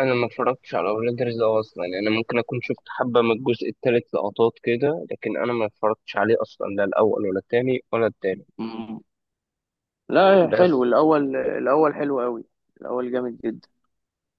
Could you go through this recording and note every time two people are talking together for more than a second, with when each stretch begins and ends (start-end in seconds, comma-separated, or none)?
none